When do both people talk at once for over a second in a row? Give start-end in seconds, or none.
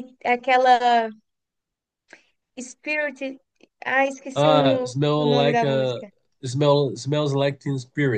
4.3-6.0